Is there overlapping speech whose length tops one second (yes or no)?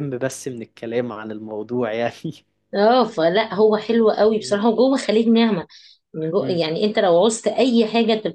no